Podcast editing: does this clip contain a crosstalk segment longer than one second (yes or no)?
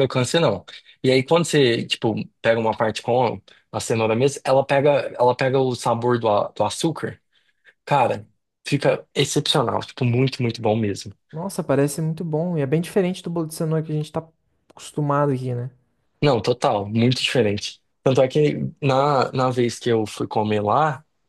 no